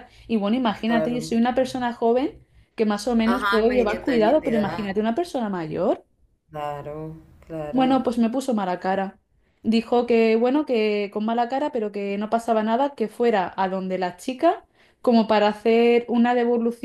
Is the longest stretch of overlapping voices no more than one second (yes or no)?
no